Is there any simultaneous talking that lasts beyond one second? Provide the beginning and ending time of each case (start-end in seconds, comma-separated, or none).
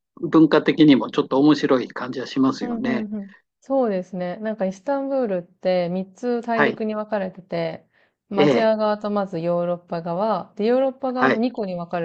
none